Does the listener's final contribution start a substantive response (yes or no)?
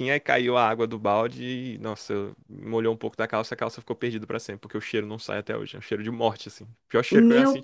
yes